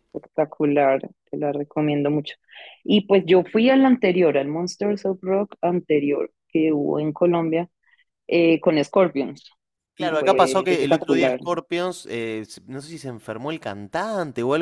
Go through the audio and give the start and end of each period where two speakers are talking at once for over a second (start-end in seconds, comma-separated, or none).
9.9-11.4